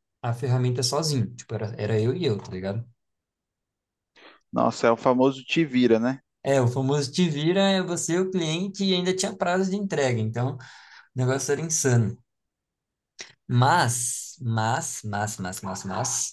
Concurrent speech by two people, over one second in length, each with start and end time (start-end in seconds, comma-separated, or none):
none